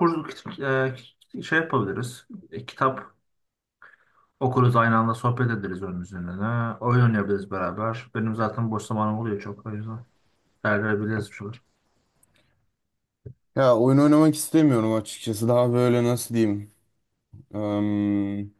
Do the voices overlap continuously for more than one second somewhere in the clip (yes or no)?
no